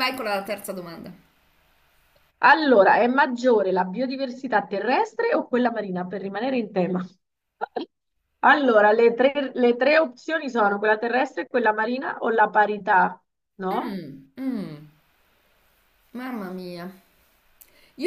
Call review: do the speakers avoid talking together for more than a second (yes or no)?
yes